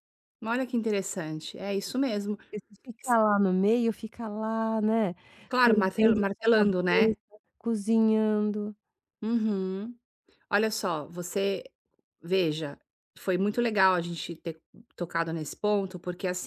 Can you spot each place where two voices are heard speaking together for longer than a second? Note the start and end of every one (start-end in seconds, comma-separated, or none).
5.6-7.1